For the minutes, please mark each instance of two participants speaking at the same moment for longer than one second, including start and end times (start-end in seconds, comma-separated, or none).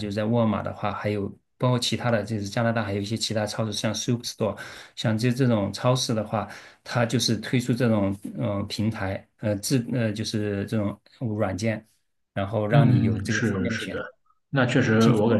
12.7-14.0